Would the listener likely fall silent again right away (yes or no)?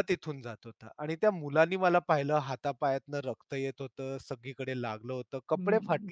no